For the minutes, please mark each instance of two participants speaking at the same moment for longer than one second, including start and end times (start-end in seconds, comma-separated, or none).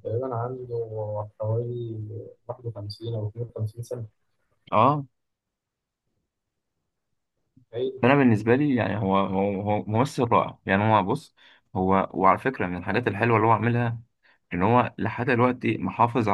none